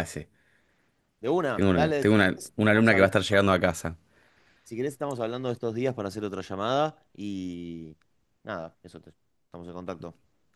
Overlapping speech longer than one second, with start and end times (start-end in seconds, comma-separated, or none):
1.5-3.1